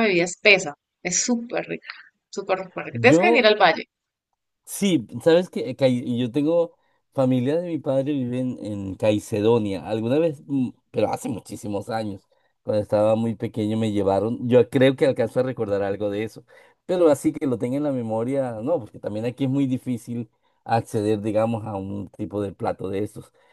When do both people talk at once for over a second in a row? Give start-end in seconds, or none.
none